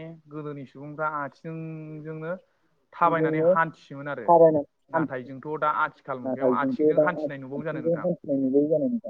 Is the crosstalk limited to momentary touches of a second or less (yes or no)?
no